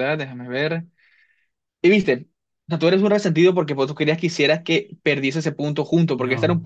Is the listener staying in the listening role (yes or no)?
yes